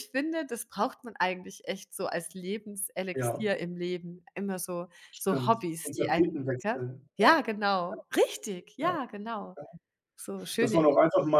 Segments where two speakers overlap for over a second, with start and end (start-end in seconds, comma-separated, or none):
5.1-7.5